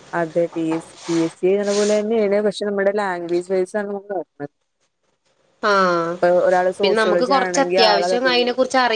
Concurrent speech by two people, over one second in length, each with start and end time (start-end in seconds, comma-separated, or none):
6.8-8.5